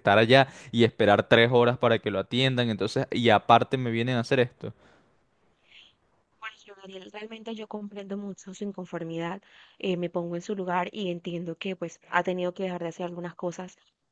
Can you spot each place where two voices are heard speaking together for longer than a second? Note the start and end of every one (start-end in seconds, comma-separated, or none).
none